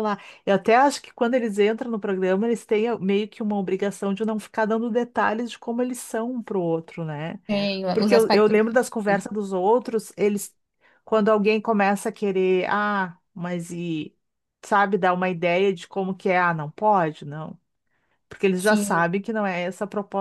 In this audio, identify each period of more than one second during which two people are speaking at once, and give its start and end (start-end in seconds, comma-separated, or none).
7.9-9.2